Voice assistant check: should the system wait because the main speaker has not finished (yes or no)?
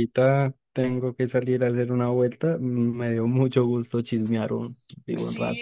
no